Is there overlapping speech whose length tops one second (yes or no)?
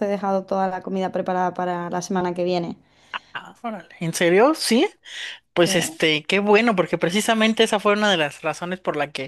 no